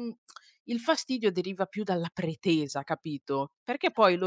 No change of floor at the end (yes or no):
yes